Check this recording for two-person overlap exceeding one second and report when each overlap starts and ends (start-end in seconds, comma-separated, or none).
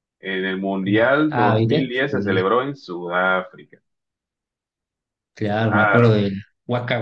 0.9-2.5